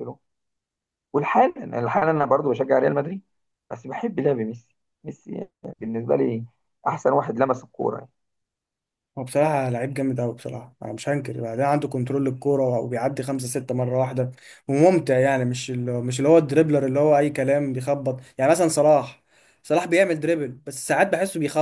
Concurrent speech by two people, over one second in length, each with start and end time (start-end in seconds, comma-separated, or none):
none